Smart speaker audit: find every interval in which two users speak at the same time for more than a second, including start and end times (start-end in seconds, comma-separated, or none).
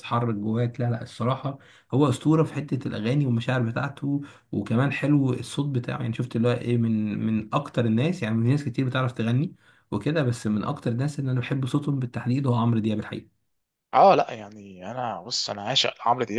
none